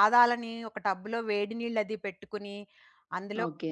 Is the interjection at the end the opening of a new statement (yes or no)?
no